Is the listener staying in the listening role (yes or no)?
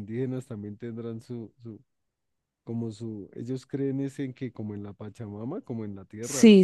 no